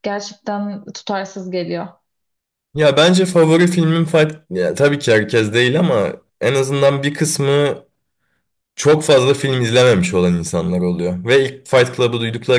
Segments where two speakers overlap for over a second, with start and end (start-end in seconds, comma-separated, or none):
none